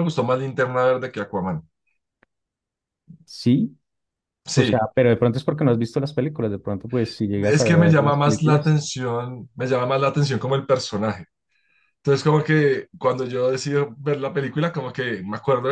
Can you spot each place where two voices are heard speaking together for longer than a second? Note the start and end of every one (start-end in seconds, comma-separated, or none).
7.5-8.8